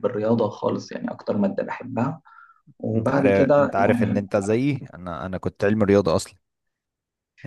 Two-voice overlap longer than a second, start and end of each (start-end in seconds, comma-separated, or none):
2.9-4.2